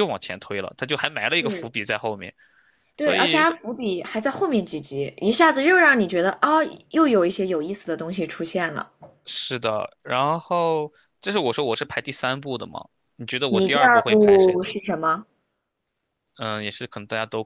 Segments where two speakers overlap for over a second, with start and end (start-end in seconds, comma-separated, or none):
13.5-14.7